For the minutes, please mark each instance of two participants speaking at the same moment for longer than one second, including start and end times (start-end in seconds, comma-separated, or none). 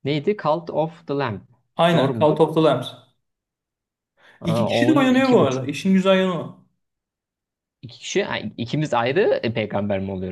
4.4-5.7